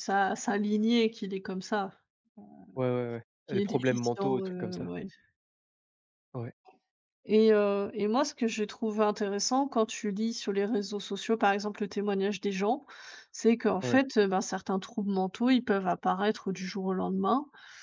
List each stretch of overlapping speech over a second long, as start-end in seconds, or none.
3.5-4.9